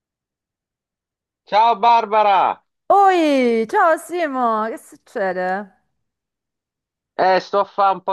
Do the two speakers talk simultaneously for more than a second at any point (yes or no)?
no